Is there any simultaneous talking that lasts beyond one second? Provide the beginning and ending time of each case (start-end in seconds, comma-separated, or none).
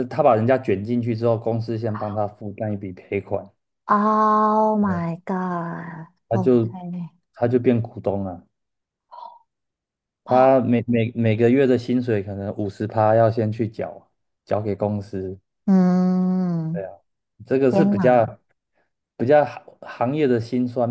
none